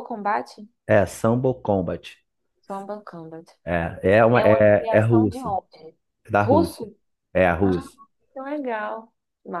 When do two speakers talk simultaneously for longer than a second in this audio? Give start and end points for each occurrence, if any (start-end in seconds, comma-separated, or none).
4.3-5.5